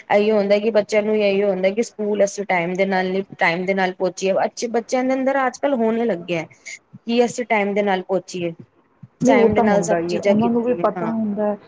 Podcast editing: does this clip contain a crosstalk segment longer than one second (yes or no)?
yes